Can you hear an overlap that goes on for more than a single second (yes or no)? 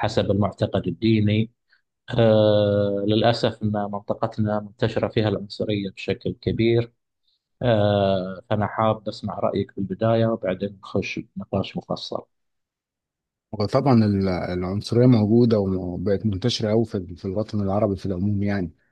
no